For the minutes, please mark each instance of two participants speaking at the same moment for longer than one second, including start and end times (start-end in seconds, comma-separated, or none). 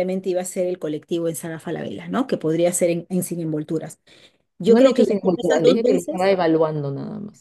4.6-6.3